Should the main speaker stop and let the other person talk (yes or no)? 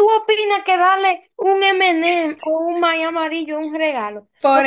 yes